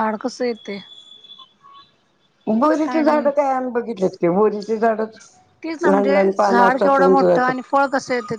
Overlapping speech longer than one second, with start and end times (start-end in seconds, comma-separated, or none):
5.9-7.7